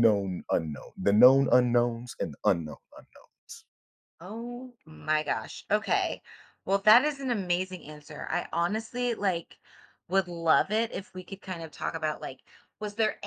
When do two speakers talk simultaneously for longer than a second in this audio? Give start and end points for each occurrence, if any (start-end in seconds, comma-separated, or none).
none